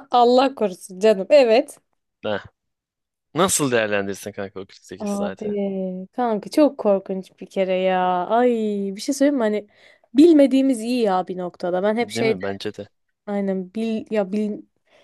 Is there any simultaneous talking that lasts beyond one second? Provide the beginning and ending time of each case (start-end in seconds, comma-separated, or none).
none